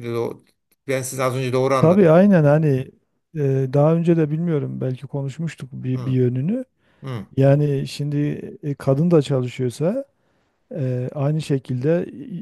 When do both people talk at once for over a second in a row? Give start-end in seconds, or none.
none